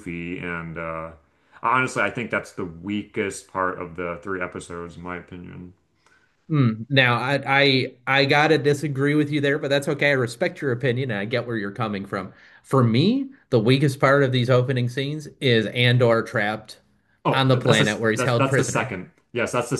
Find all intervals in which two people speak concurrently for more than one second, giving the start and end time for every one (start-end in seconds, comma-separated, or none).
17.3-19.0